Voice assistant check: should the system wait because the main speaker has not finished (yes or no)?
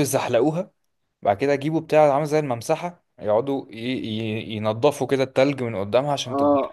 no